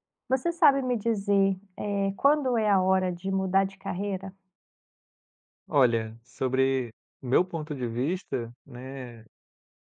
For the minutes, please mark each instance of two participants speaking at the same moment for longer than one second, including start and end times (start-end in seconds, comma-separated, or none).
none